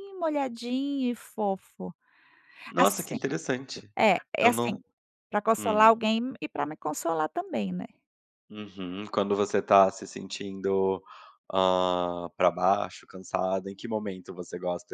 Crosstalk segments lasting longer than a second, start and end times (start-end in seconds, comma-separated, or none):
none